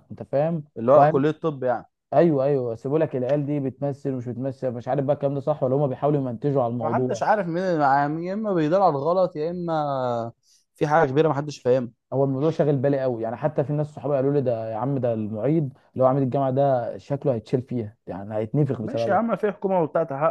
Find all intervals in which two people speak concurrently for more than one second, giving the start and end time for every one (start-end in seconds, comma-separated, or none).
none